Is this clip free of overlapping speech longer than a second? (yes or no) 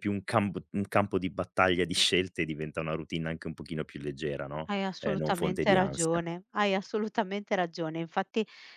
no